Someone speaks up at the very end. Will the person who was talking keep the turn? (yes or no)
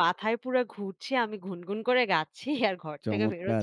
no